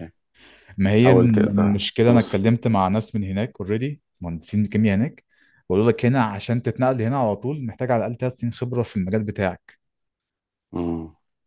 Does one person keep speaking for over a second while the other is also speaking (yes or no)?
yes